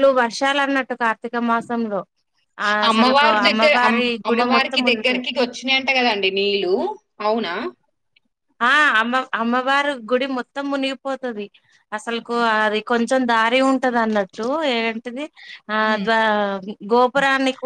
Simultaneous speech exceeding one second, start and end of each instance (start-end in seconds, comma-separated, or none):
3.5-5.1